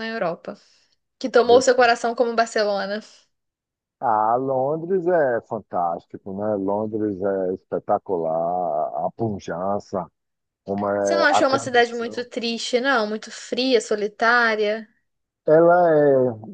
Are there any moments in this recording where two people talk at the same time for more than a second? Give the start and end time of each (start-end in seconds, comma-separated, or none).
11.0-12.3